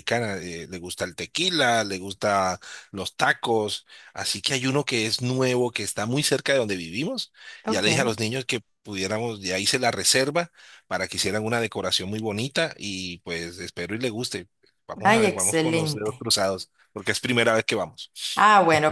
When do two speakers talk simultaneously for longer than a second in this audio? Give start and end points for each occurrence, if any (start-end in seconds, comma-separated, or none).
15.0-16.2